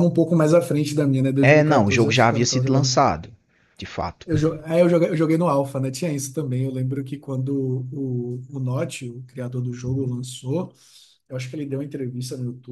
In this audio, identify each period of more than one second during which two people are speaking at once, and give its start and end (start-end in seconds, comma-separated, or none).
1.4-2.9